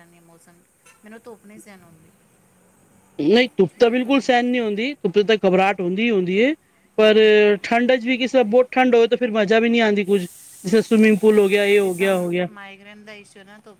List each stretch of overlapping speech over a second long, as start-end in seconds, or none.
none